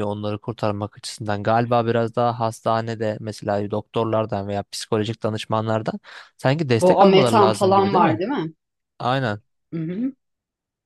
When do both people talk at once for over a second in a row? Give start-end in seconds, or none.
6.8-8.2